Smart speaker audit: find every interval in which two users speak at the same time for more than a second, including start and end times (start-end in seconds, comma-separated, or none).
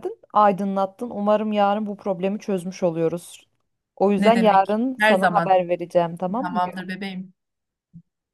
4.2-5.6